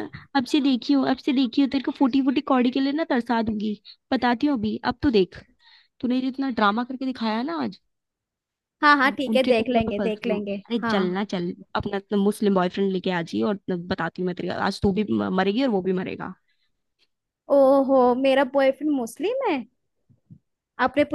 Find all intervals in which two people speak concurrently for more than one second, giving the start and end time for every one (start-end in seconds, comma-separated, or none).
9.0-11.0